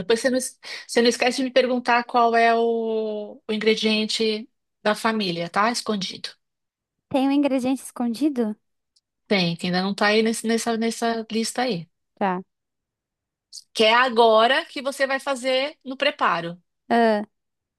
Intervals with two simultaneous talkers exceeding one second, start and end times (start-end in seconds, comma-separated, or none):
none